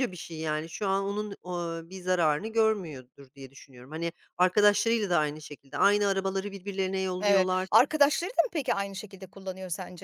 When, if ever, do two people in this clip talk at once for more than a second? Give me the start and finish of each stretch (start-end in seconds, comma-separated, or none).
none